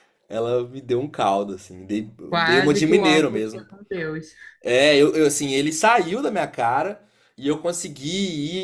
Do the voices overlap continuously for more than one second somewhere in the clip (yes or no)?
yes